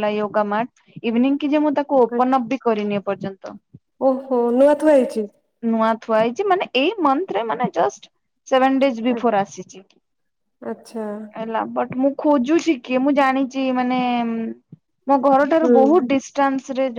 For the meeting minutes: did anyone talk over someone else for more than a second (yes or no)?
no